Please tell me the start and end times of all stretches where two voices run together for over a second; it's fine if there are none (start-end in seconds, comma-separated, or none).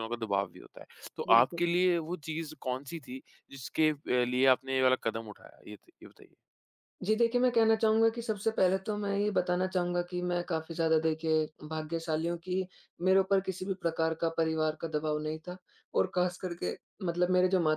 none